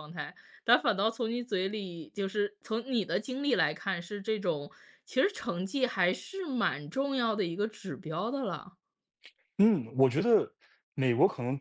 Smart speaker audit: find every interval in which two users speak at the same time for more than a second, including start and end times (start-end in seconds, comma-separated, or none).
none